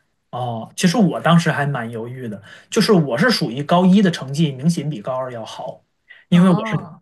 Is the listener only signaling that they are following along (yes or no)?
yes